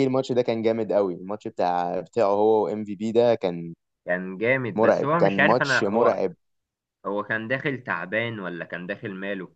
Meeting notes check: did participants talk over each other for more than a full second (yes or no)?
yes